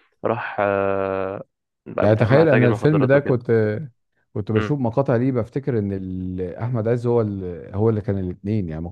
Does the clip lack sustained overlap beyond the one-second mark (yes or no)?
no